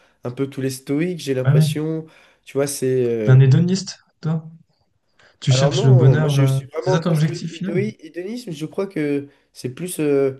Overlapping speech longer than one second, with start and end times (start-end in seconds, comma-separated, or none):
5.5-7.8